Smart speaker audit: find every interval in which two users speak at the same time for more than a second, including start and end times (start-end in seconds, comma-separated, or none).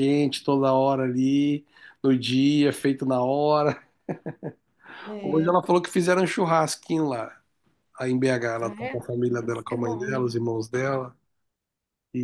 8.6-10.3